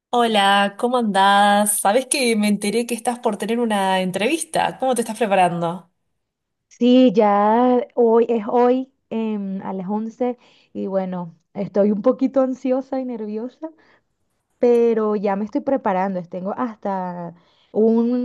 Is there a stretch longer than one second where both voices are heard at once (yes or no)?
no